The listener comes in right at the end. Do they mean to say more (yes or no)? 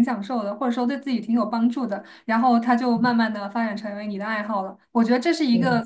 no